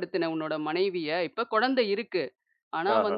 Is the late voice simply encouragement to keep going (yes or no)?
yes